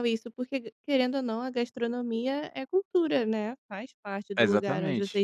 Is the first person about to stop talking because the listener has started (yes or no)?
yes